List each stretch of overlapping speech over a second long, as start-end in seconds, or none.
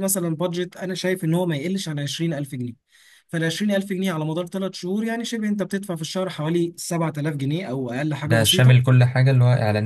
none